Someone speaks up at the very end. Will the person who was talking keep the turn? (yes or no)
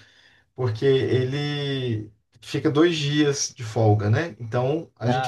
yes